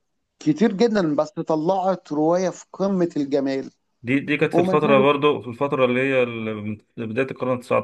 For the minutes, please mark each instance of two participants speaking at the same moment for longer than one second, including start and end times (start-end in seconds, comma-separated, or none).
none